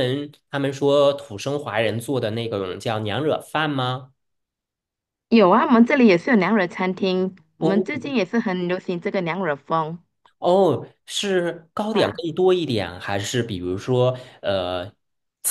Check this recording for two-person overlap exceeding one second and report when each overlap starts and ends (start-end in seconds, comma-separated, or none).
none